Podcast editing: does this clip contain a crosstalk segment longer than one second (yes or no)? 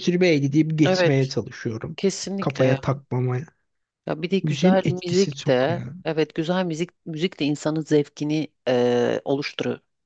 yes